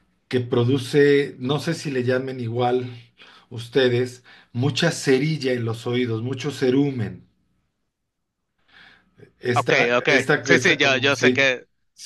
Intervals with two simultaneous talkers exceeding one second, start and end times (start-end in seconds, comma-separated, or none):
9.5-11.5